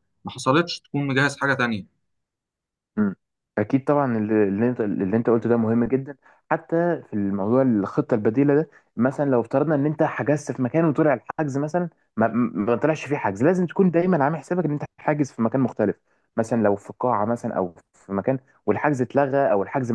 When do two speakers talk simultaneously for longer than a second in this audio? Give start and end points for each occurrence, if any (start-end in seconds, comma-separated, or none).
none